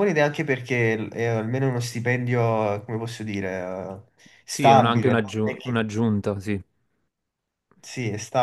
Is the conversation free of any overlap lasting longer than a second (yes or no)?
no